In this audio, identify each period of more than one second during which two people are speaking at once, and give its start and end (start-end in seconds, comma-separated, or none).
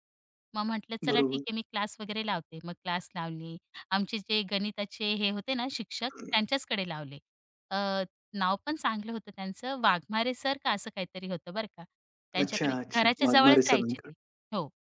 12.4-14.1